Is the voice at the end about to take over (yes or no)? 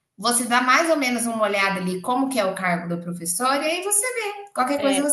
no